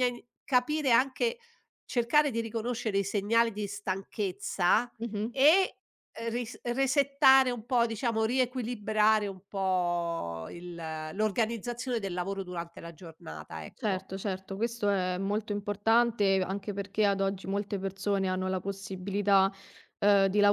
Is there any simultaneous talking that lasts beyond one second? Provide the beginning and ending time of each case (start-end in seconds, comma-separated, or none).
none